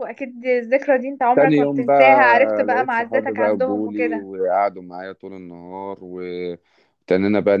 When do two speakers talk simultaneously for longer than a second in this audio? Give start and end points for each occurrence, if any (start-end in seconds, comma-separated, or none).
1.3-4.3